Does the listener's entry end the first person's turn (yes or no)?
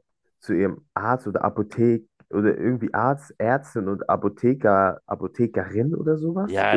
yes